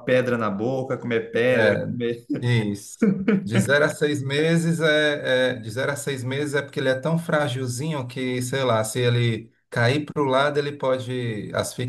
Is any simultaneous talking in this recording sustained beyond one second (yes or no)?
no